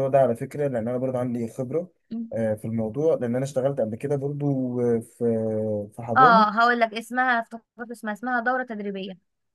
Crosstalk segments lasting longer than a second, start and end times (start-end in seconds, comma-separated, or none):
none